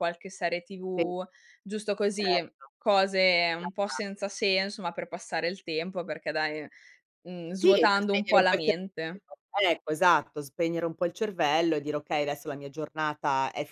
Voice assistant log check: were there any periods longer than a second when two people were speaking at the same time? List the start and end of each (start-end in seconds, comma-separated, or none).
7.6-9.2